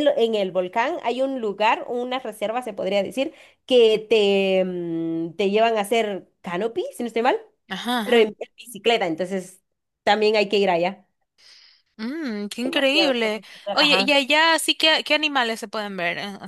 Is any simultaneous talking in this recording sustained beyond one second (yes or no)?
yes